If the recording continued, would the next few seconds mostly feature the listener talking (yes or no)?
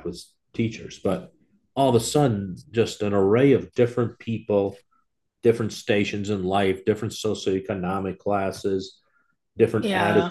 no